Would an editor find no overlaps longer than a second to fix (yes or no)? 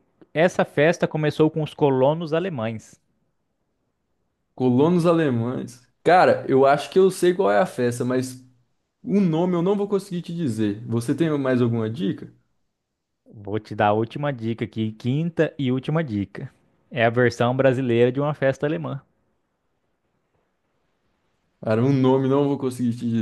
yes